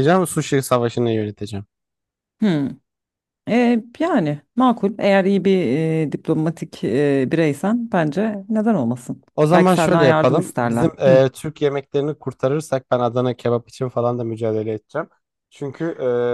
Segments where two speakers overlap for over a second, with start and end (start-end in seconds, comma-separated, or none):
9.3-11.2